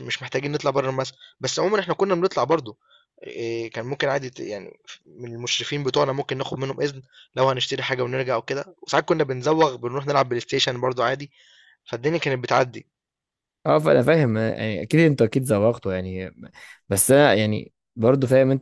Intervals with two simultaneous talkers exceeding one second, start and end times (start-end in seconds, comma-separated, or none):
none